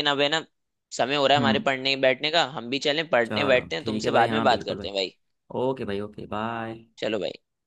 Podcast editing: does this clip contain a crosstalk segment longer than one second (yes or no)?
yes